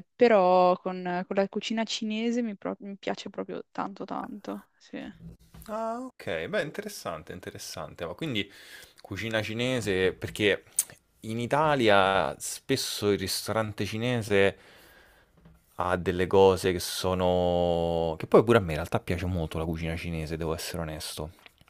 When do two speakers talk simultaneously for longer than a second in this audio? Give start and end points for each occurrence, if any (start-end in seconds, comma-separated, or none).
none